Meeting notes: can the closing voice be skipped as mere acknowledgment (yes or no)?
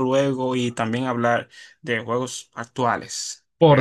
no